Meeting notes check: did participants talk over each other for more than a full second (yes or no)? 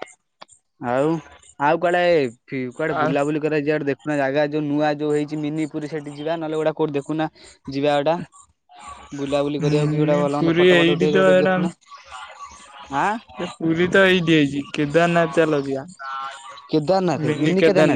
yes